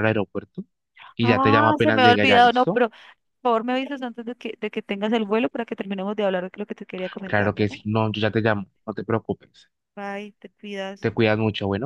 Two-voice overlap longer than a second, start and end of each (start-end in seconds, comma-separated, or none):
1.2-2.8